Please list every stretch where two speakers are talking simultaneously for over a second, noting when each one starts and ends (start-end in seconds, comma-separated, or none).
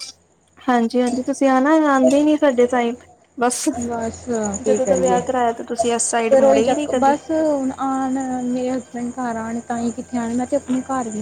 4.6-7.1